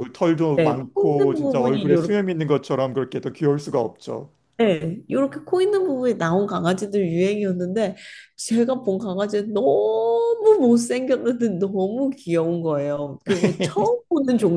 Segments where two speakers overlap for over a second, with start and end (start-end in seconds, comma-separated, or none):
0.6-1.9